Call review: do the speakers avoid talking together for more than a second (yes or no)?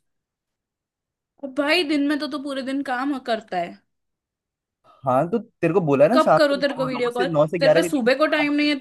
no